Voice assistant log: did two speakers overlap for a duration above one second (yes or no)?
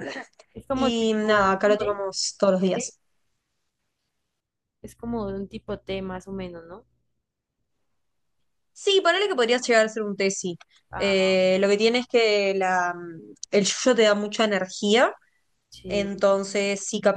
yes